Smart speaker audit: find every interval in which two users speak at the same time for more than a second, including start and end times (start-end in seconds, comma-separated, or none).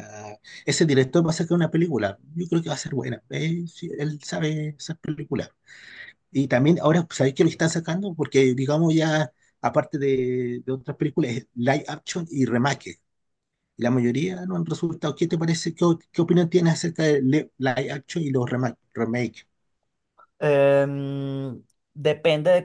none